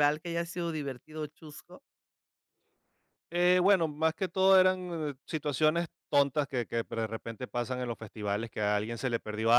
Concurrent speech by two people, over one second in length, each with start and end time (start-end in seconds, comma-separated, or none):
none